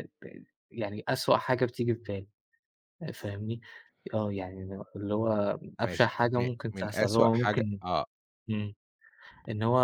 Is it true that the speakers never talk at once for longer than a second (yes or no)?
no